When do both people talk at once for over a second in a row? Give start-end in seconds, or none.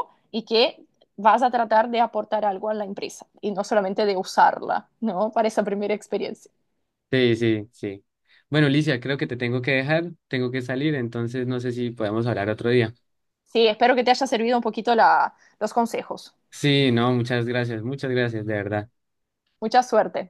none